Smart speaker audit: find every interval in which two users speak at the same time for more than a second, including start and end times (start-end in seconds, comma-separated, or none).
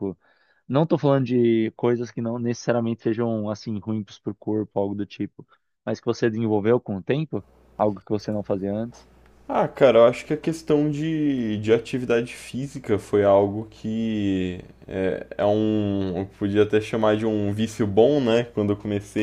none